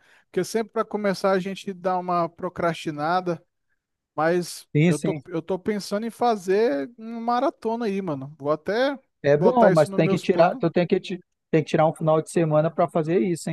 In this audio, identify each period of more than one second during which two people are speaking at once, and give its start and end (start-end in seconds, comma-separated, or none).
9.3-10.6